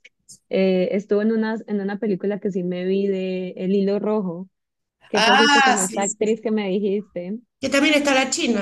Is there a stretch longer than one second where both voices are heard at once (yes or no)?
yes